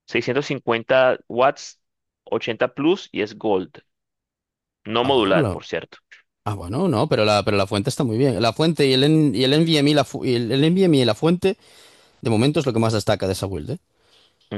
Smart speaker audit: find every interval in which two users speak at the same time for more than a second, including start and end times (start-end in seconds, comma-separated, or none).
none